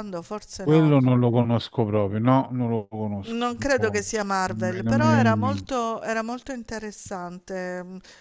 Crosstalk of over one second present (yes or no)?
yes